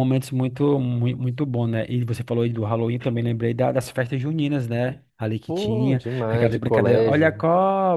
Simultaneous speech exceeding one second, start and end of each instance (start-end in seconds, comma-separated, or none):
5.5-7.5